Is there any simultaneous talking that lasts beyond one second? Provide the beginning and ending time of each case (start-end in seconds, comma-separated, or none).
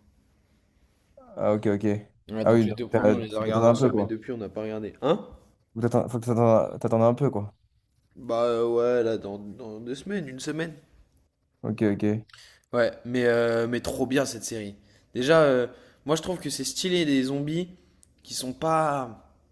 2.4-4.1